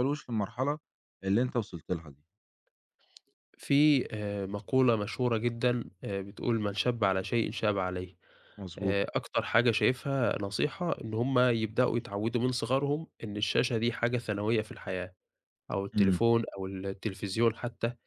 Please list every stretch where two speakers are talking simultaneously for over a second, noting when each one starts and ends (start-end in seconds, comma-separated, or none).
none